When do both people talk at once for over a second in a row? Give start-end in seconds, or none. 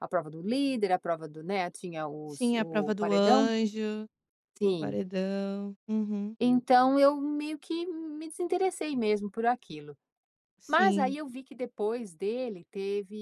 2.3-3.5